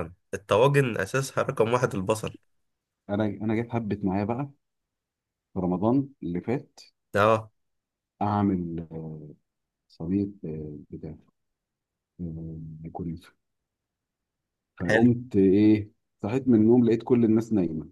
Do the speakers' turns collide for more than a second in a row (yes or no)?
no